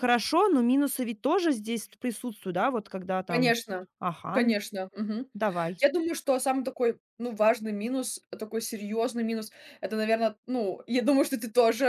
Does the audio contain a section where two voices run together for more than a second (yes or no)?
no